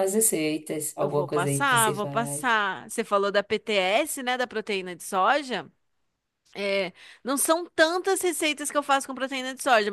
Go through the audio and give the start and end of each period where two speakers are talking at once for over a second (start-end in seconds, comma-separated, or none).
1.0-2.5